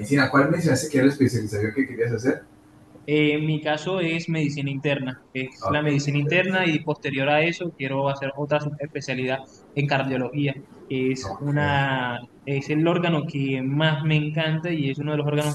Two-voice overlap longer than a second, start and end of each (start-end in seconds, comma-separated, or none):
none